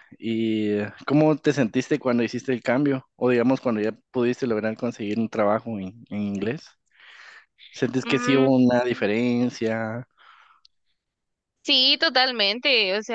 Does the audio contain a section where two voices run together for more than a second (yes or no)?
no